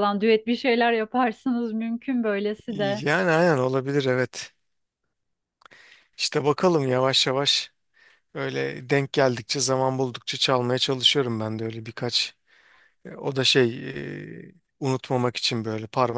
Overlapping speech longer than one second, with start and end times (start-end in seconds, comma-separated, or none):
none